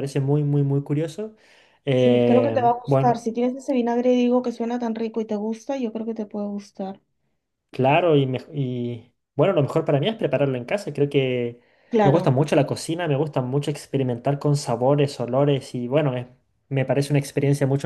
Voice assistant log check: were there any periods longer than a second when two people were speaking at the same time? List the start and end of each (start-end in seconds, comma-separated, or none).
2.0-3.2